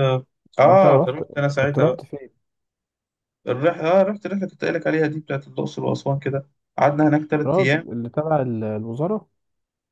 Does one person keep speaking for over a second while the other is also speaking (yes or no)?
yes